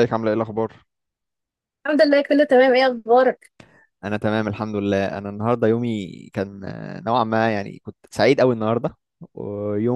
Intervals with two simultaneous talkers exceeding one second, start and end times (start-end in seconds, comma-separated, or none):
none